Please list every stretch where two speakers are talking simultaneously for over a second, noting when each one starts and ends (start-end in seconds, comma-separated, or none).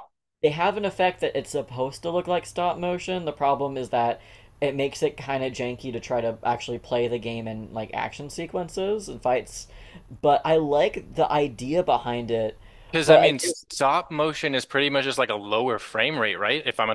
none